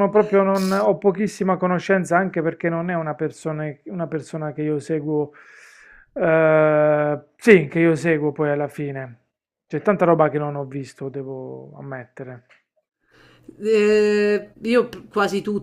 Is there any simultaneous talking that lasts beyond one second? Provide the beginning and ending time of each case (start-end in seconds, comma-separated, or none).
none